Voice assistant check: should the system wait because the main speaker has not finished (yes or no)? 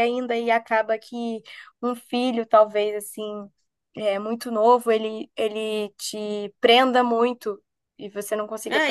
no